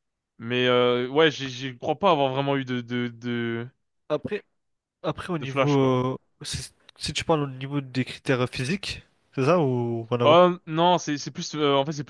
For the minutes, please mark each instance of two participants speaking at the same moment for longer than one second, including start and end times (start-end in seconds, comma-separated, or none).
none